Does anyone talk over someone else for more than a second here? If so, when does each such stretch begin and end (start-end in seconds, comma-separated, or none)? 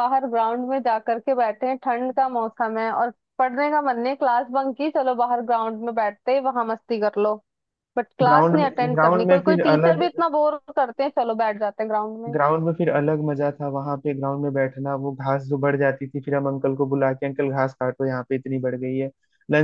8.2-10.0